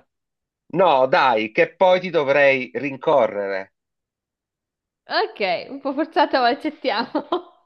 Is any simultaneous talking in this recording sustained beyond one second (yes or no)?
no